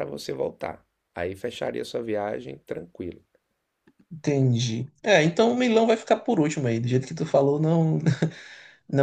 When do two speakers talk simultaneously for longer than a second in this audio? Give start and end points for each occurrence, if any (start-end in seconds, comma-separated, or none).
none